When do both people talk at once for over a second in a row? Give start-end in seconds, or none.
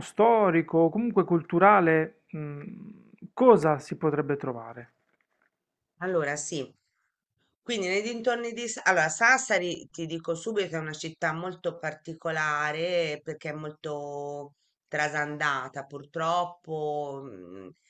none